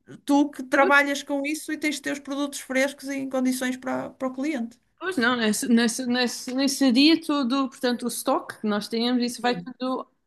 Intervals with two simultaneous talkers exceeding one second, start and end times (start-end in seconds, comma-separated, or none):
none